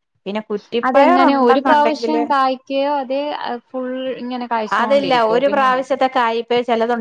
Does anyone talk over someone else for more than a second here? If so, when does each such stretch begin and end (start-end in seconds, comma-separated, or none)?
0.9-2.2